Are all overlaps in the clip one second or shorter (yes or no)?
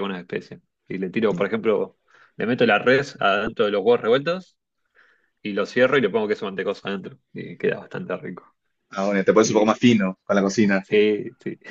yes